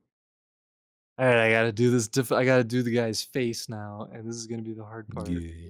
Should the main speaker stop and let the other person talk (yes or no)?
no